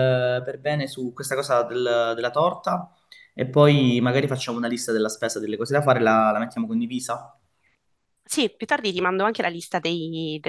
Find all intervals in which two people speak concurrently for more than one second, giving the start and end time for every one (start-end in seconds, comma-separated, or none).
none